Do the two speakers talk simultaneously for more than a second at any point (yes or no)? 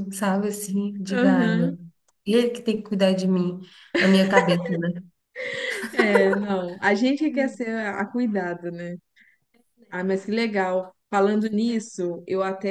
no